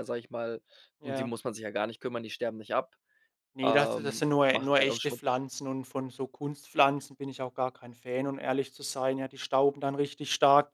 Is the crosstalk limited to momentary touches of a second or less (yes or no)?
no